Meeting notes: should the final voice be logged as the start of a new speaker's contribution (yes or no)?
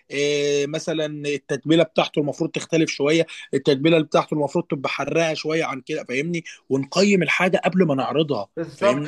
yes